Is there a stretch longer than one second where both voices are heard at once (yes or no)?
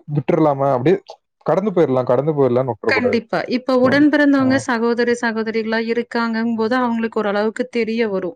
no